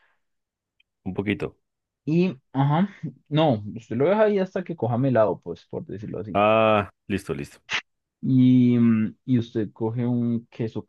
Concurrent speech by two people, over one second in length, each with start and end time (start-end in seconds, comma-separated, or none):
none